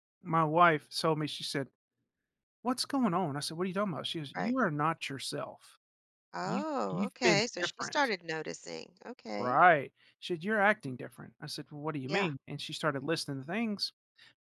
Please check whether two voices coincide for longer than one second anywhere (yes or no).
yes